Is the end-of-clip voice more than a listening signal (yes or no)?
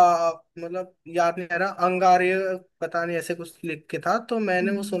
yes